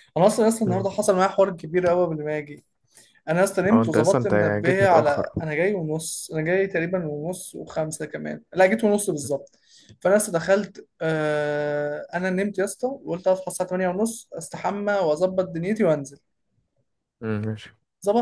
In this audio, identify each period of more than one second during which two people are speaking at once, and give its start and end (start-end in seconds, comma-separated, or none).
3.7-5.5